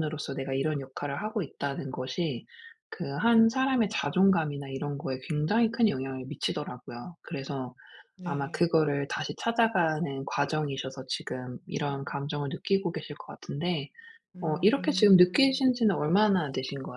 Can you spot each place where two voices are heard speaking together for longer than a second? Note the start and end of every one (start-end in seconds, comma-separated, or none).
14.4-15.7